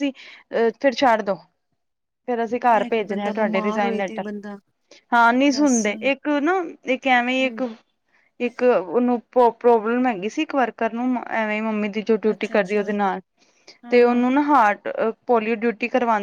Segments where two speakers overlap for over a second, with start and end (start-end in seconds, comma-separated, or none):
2.7-4.2